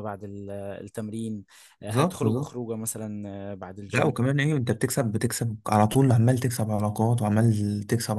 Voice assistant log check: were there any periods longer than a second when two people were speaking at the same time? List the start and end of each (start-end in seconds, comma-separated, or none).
none